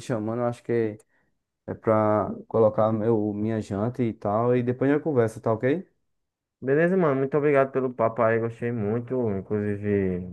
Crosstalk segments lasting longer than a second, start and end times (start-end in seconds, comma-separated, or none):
none